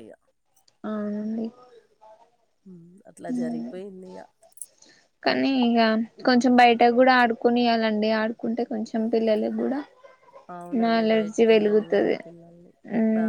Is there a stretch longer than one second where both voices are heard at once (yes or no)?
yes